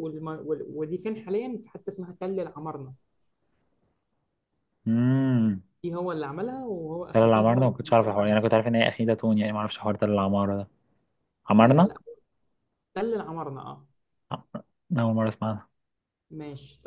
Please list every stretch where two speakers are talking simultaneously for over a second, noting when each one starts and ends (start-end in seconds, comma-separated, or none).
7.1-8.4